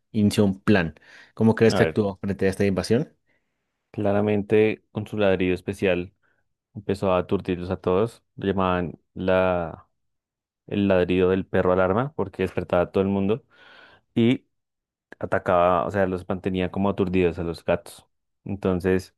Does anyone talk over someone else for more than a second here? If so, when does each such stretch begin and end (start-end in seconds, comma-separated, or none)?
none